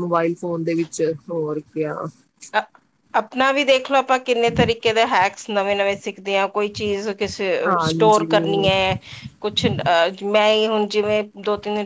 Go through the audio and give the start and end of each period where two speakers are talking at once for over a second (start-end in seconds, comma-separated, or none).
none